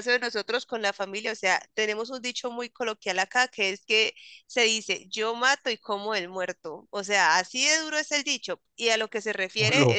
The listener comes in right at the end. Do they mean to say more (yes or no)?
no